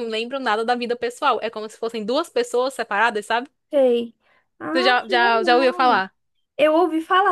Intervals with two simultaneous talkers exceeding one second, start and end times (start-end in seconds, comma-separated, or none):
4.7-6.0